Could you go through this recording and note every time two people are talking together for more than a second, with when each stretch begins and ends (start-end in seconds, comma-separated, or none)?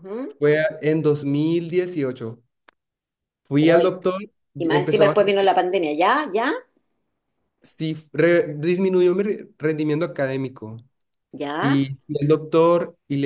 none